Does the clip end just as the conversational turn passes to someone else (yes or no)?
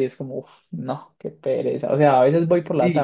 yes